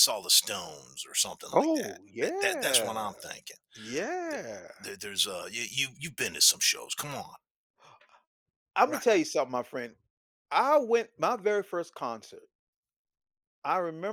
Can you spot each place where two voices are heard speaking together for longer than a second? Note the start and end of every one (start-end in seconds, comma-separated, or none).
1.5-3.1